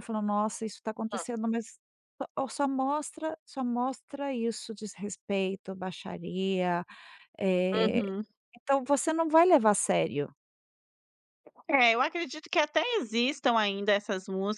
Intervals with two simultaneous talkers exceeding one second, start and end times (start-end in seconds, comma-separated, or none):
none